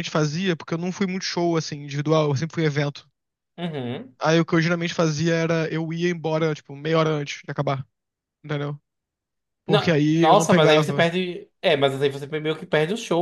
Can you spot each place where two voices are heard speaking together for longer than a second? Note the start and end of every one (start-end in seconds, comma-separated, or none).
9.7-11.1